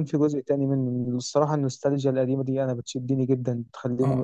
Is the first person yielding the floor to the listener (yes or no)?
yes